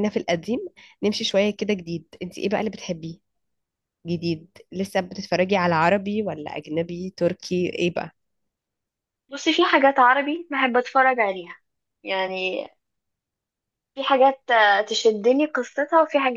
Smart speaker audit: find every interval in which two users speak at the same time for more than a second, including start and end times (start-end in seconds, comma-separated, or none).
none